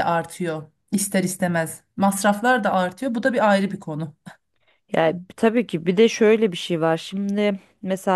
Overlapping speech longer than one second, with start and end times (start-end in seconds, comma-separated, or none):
none